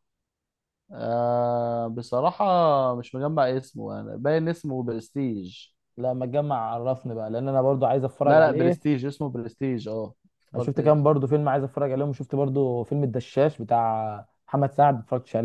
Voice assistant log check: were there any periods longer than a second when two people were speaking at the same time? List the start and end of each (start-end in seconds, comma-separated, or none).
none